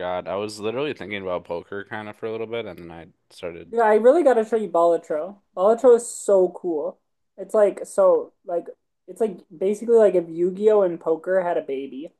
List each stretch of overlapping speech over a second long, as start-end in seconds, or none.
none